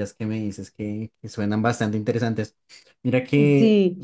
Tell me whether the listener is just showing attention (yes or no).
yes